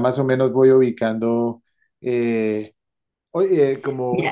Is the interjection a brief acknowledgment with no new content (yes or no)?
yes